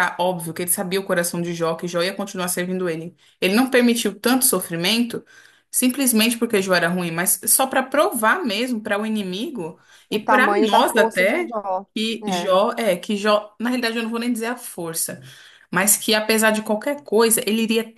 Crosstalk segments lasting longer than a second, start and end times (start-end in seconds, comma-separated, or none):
10.1-11.5